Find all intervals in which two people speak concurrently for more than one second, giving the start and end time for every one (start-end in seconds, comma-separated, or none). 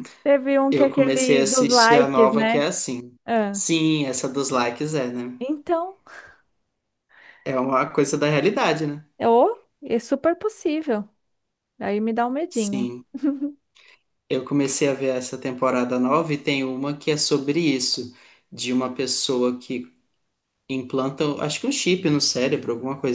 0.7-2.7